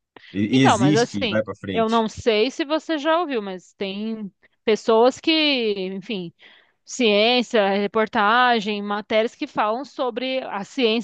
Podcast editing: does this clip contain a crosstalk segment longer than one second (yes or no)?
yes